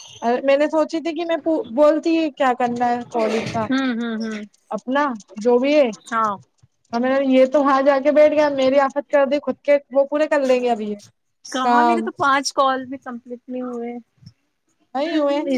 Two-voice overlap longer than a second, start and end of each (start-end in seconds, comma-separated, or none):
none